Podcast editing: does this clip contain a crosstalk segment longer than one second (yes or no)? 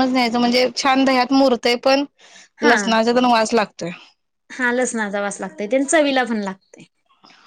no